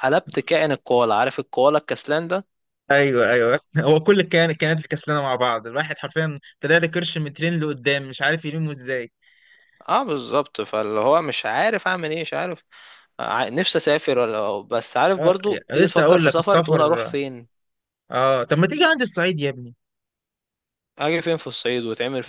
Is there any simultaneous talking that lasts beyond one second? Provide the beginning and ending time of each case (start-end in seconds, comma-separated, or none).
15.2-17.1